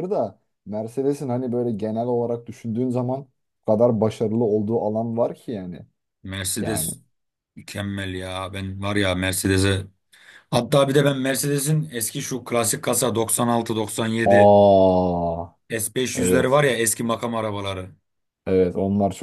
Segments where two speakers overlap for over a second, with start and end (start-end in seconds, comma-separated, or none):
none